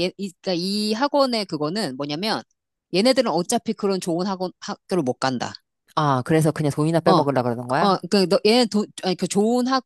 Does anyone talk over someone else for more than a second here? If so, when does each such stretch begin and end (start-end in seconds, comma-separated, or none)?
none